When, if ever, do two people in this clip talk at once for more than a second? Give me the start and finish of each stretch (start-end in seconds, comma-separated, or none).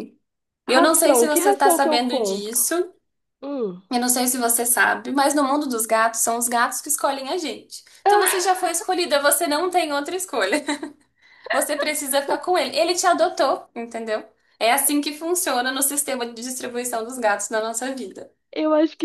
0.7-2.6